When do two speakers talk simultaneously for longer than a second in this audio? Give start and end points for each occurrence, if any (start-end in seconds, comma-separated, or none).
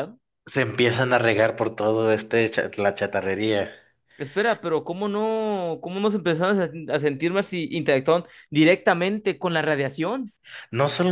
none